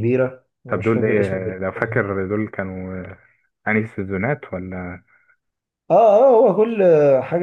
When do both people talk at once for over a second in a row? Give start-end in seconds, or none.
0.7-2.0